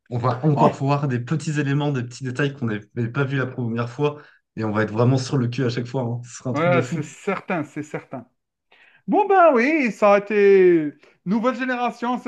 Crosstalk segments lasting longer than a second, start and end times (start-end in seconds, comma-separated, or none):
none